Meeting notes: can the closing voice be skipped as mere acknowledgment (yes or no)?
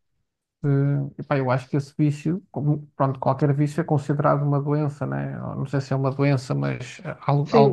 no